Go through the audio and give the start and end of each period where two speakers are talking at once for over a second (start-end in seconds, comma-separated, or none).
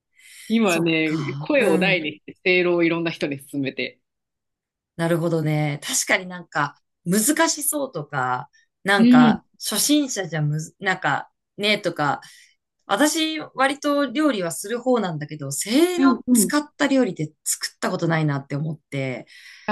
0.6-2.0